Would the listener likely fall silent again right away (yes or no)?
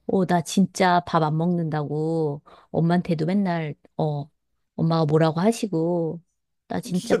no